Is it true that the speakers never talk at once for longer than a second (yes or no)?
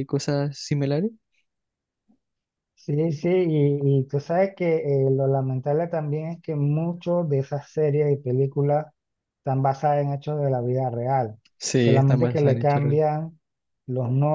no